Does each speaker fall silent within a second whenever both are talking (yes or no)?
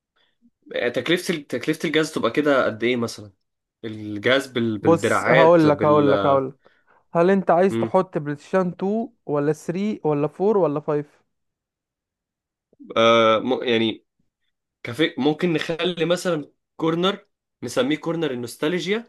no